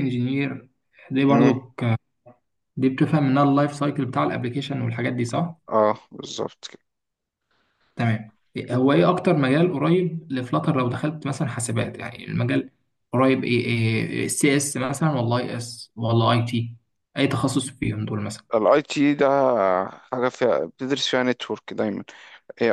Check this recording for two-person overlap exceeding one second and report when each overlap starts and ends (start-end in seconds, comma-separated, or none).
none